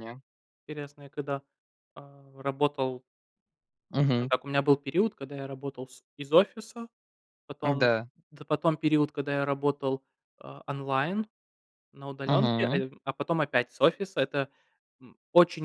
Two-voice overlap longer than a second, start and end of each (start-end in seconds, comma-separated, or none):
none